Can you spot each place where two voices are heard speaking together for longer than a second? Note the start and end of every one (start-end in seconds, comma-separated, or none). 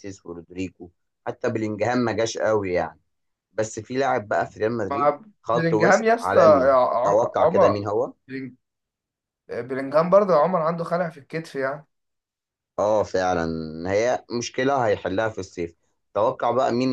4.9-7.8